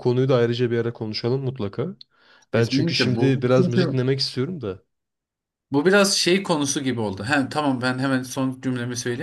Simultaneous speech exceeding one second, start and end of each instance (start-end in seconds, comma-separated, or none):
2.5-4.0